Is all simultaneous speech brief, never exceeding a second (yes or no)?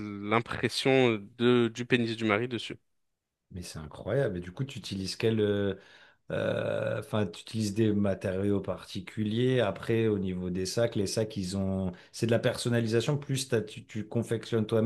yes